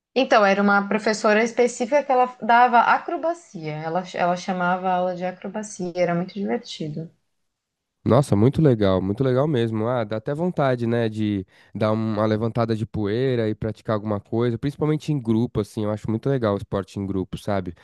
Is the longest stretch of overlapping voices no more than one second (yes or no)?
yes